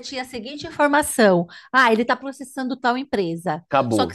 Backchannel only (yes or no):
yes